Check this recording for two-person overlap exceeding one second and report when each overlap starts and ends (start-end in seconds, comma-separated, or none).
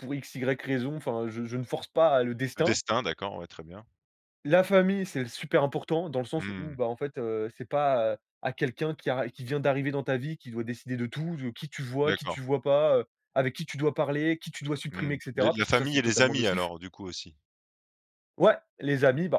14.9-16.7